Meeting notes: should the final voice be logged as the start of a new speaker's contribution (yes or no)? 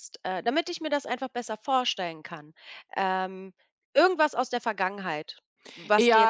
yes